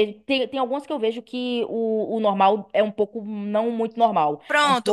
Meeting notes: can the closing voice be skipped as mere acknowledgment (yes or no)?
no